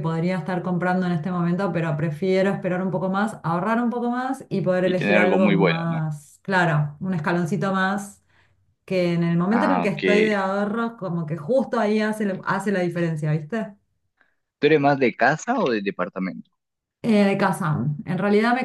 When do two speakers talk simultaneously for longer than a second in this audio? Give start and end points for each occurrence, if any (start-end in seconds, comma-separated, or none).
4.8-6.0